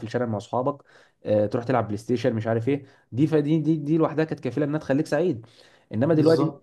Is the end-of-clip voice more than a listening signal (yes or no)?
no